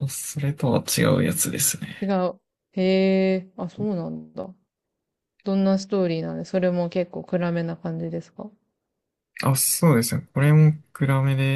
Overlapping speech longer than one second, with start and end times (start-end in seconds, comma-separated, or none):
none